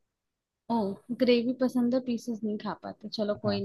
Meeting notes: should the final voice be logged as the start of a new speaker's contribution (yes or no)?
no